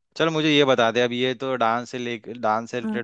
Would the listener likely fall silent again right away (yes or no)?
yes